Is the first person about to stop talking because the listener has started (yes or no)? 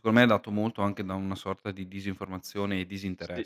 yes